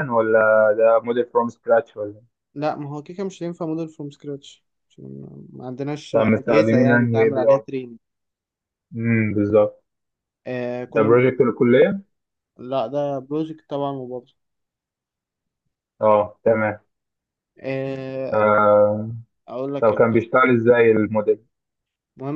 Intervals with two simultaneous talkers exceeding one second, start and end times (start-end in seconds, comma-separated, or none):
6.1-7.6